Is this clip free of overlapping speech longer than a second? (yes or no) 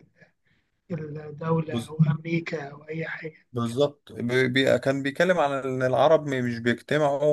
yes